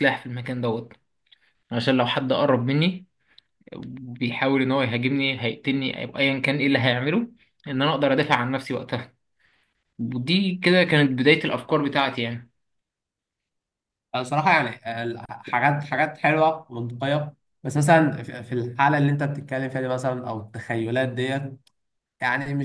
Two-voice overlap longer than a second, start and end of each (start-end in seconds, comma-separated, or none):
none